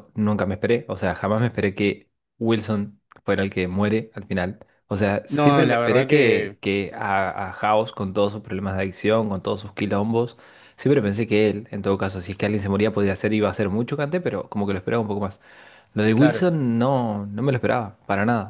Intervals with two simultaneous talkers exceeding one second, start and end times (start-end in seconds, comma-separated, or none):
5.3-6.6